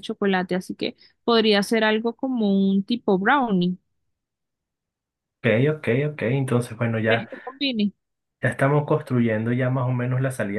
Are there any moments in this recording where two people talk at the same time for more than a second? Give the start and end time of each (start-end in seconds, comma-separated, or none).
none